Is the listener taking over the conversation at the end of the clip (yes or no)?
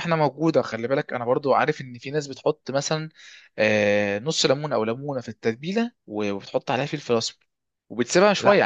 no